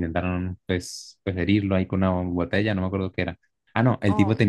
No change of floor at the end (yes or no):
yes